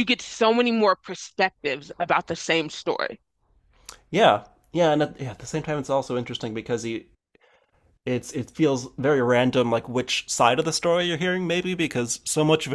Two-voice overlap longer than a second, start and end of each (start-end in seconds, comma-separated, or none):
none